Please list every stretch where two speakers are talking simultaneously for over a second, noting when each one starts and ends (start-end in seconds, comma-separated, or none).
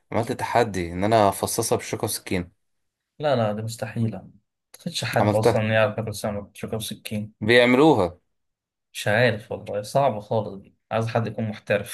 none